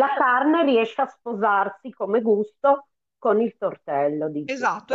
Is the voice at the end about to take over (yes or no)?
yes